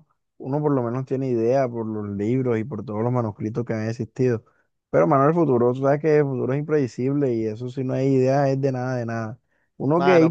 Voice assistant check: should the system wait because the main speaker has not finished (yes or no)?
yes